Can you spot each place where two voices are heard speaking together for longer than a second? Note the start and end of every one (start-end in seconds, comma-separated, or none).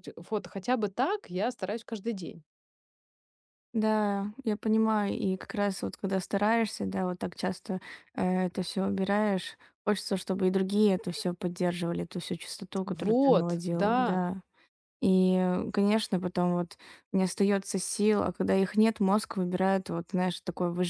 12.8-14.2